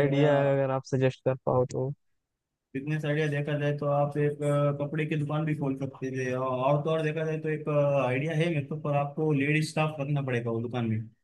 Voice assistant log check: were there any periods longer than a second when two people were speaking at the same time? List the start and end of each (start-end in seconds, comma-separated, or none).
none